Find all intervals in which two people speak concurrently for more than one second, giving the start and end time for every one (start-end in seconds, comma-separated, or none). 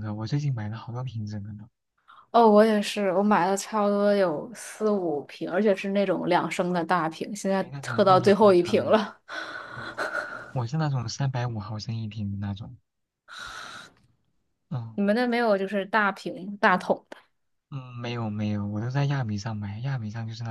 7.6-9.0